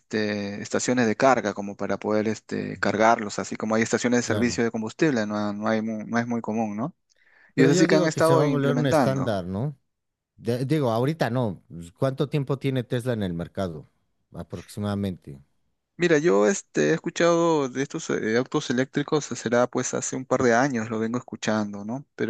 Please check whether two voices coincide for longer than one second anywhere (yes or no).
yes